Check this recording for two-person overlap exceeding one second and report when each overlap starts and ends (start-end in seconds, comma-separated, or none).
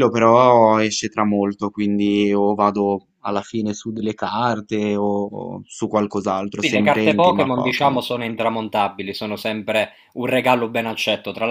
6.6-8.0